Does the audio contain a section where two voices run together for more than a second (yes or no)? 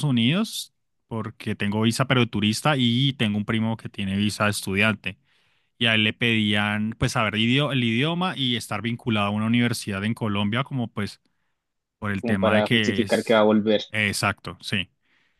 yes